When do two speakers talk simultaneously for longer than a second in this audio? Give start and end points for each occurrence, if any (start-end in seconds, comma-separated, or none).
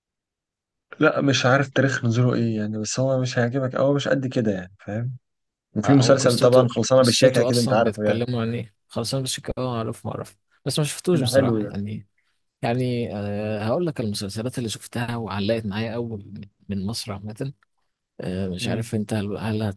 5.8-8.2